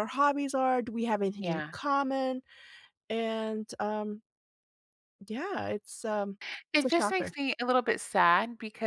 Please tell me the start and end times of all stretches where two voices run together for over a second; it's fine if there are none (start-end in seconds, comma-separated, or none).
none